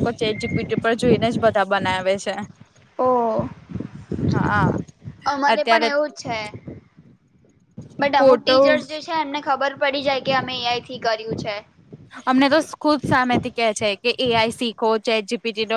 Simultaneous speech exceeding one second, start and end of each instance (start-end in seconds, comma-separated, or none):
none